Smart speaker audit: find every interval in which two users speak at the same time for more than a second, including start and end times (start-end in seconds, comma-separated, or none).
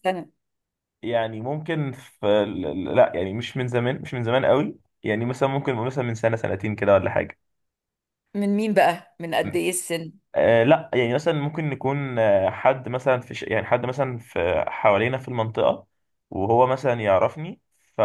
none